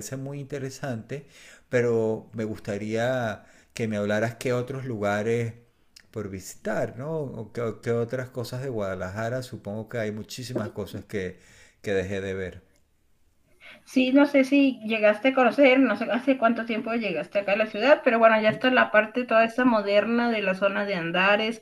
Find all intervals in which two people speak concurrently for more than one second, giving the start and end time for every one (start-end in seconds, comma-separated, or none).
none